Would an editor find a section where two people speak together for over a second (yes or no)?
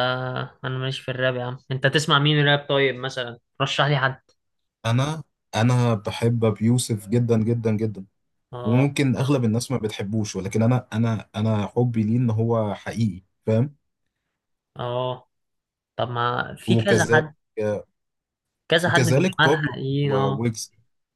yes